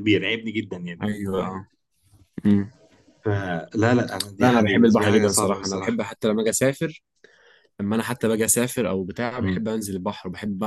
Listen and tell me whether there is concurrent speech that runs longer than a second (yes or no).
yes